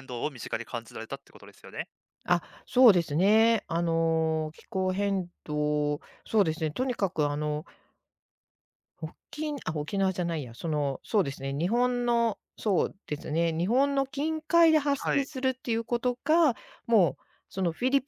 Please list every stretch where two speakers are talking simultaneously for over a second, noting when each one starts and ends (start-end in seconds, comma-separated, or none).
none